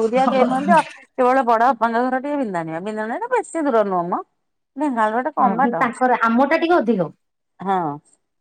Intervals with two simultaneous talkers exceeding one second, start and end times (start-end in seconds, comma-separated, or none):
none